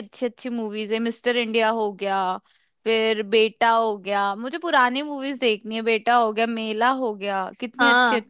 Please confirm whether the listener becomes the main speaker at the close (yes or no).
yes